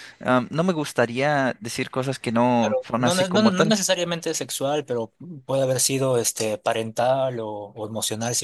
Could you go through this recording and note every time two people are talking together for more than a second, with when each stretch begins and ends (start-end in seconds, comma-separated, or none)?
2.6-3.8